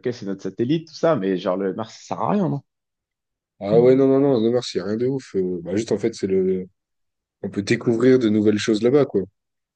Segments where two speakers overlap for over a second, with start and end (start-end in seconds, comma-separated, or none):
none